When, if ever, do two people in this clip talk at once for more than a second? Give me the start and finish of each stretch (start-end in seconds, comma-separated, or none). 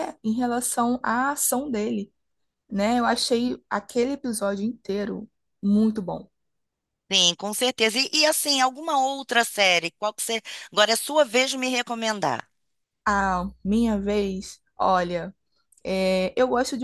none